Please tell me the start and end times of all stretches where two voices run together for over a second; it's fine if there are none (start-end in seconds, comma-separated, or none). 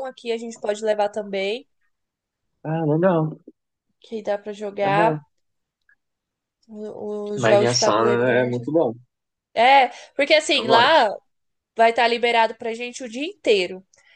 7.4-8.6